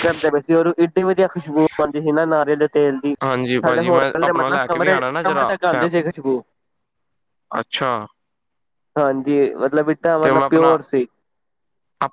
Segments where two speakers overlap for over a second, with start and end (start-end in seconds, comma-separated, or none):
3.6-5.8